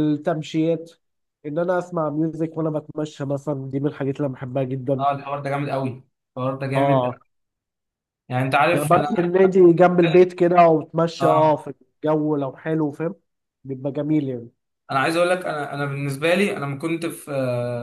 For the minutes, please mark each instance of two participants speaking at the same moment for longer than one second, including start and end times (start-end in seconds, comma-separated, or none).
none